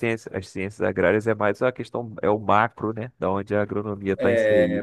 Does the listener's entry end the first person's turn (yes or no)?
yes